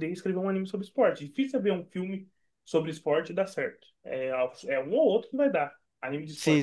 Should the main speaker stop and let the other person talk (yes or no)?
yes